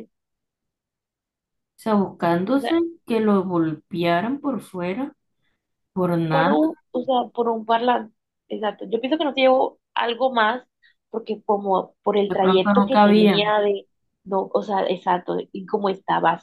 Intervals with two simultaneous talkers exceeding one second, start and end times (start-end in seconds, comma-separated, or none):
12.3-13.5